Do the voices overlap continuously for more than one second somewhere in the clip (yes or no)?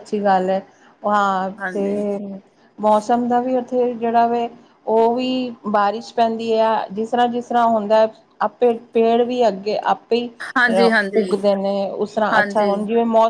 no